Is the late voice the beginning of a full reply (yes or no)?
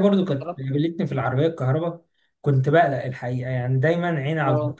no